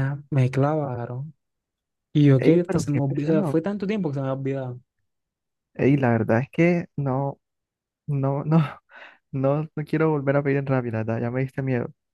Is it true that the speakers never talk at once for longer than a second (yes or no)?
no